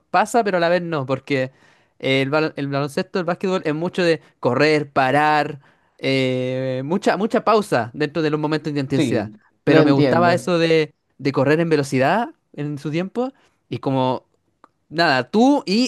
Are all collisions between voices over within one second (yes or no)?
no